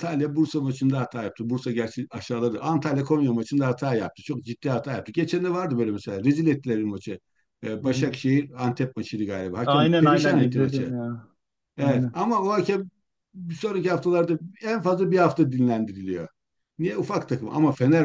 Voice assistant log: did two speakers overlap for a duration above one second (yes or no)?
yes